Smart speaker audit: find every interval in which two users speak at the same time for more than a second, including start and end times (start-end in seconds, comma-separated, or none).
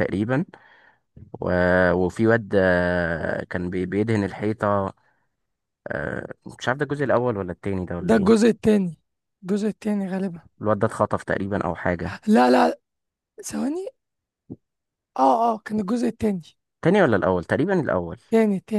none